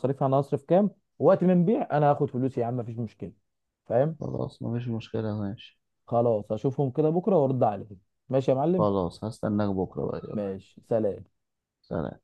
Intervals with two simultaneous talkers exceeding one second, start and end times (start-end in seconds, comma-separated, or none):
none